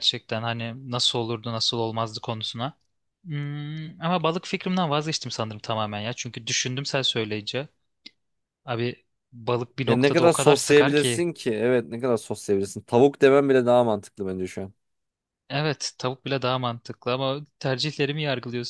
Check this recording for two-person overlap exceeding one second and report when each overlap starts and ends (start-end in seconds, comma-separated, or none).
9.9-11.3